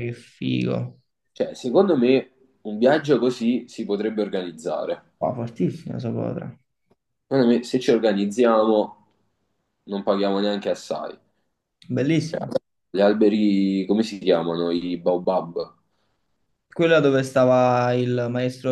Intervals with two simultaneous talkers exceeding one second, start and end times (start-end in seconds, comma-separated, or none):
none